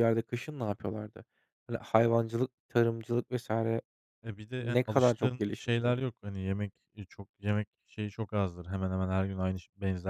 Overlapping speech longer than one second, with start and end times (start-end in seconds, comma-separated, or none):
4.6-5.9